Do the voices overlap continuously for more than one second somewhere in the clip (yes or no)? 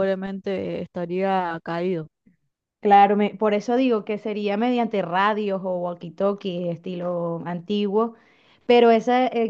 no